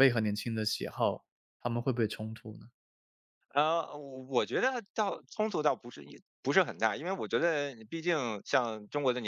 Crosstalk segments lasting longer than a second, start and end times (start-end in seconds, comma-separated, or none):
none